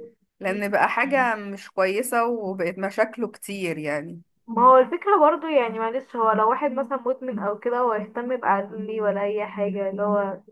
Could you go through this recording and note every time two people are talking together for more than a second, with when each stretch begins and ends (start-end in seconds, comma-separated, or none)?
none